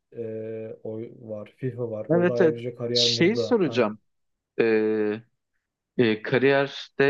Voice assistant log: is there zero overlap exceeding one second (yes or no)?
no